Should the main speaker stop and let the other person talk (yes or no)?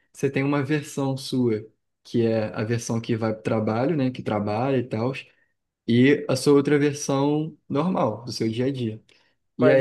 yes